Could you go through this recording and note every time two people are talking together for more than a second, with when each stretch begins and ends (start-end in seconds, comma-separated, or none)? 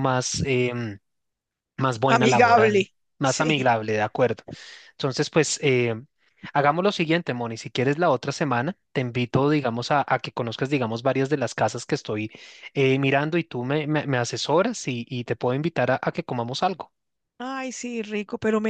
2.1-3.7